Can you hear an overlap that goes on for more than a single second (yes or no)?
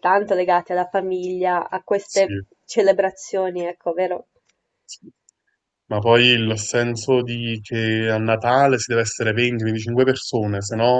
no